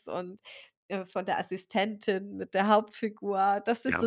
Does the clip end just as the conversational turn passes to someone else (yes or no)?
no